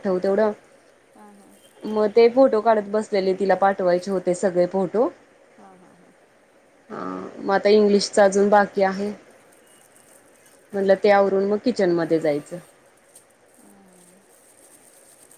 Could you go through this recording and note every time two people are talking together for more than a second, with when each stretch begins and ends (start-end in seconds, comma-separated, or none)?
none